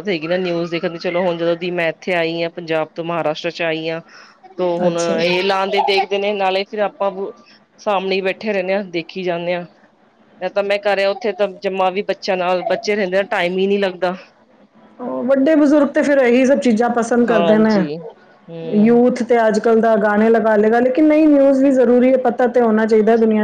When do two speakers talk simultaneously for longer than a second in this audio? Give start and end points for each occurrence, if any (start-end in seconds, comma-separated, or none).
none